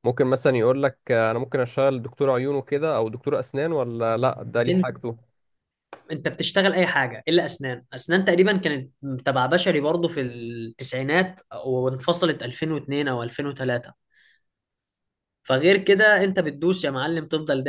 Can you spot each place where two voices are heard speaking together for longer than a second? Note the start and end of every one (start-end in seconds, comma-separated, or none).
none